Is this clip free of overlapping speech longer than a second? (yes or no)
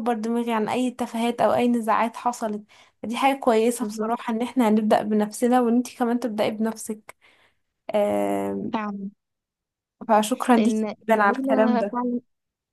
no